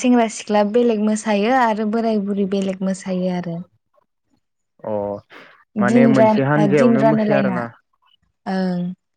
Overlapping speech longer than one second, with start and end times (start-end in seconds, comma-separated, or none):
5.9-7.6